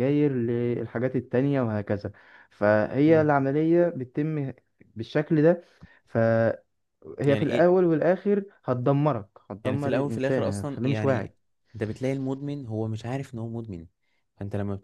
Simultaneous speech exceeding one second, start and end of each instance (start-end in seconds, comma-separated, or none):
9.6-11.3